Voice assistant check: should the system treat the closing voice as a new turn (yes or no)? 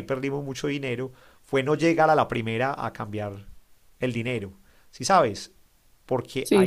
no